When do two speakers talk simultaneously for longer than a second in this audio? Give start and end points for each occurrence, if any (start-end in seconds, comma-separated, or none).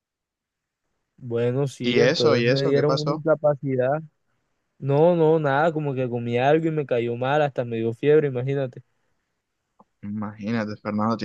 1.8-3.2